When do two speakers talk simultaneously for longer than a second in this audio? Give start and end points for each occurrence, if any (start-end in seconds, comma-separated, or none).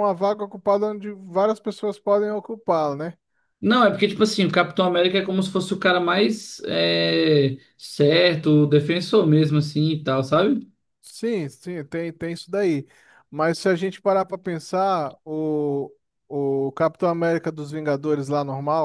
none